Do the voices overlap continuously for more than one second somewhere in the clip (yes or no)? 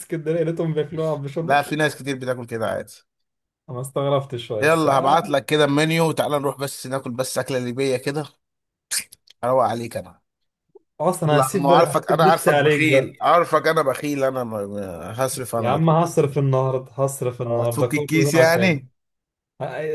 yes